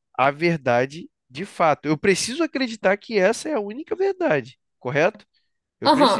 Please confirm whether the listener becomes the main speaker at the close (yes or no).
yes